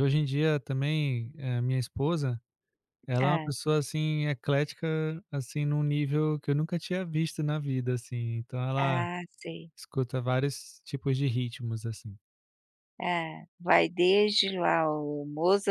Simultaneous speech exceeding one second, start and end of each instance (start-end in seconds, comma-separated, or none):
none